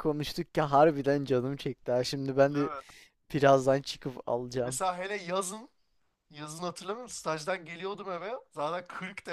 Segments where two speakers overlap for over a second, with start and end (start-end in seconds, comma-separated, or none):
none